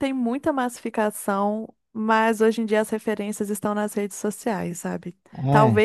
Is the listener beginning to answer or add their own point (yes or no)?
no